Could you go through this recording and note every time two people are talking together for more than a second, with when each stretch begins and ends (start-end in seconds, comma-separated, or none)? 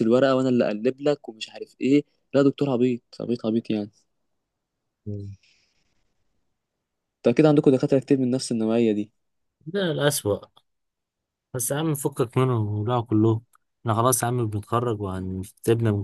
none